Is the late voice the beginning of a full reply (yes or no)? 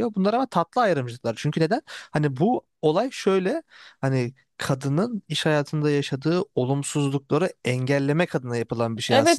yes